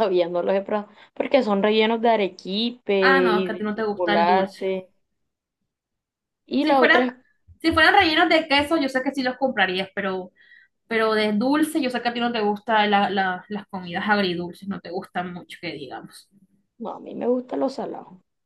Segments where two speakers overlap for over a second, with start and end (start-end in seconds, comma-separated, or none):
3.3-4.7